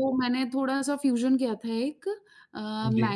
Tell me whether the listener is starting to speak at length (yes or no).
no